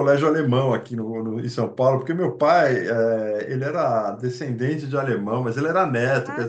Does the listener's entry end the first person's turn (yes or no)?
no